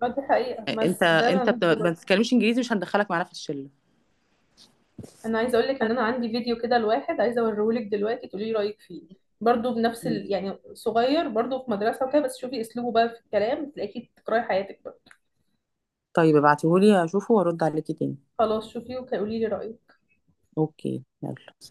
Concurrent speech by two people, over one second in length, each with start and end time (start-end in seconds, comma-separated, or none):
0.8-2.1